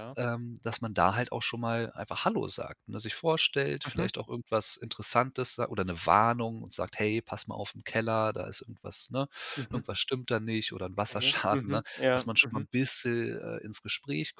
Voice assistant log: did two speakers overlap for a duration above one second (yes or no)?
yes